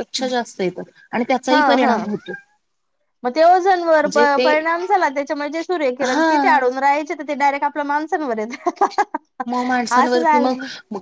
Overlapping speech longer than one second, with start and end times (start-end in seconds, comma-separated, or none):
none